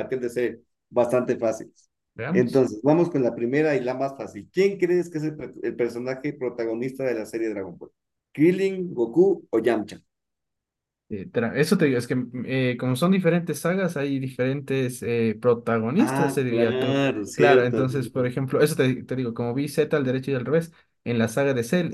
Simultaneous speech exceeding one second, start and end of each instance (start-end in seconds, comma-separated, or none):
16.0-18.3